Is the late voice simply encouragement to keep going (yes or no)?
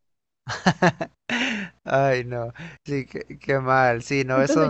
no